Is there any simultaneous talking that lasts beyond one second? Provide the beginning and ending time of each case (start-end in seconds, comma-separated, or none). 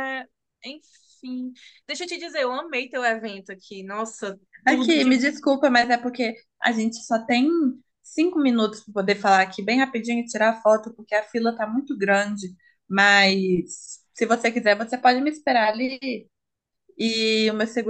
none